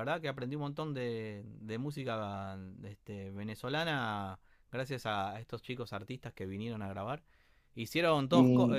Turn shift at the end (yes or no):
no